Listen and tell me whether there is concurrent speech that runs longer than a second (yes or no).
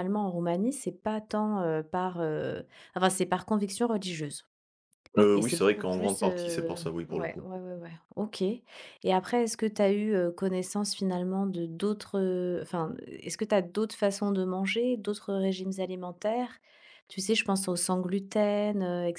yes